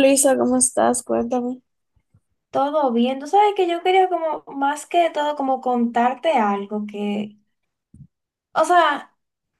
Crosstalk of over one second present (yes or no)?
no